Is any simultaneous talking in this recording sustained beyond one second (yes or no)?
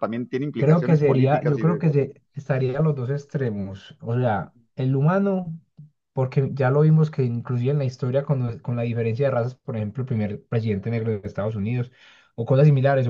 yes